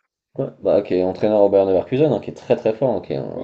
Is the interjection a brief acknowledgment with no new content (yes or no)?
no